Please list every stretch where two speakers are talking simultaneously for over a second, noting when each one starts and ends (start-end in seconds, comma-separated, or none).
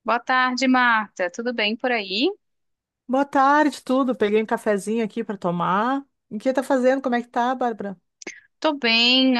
none